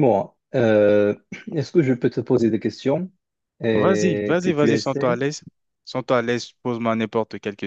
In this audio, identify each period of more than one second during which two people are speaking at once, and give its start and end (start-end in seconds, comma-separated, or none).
3.7-5.2